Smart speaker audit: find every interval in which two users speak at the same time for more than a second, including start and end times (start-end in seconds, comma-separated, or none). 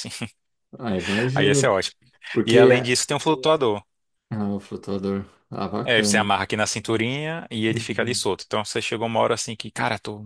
none